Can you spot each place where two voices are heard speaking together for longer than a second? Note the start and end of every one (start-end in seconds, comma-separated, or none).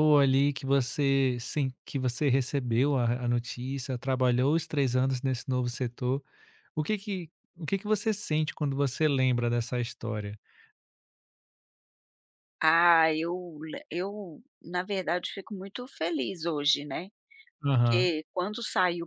none